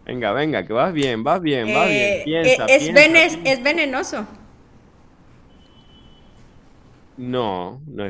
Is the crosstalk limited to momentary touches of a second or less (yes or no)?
no